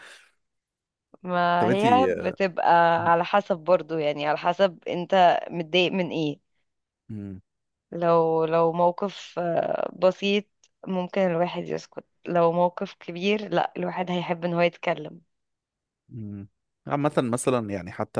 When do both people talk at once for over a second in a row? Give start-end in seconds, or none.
none